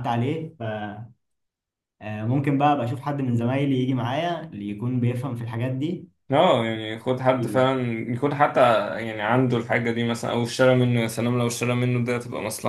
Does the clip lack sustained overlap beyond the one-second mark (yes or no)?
yes